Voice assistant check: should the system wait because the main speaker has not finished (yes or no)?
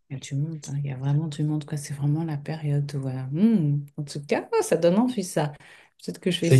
yes